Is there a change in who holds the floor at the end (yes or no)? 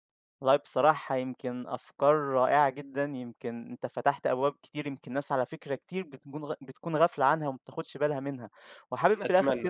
no